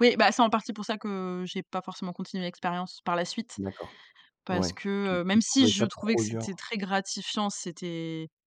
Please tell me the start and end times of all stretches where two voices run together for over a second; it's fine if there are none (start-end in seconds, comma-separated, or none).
4.5-6.5